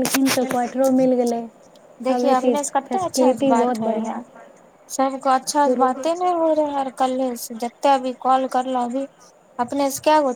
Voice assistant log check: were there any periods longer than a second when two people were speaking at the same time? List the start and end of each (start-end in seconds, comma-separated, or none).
2.1-4.1